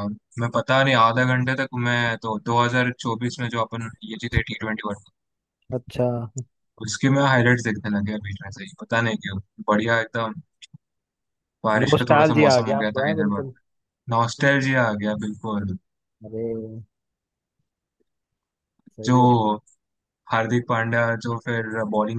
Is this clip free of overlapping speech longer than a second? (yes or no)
no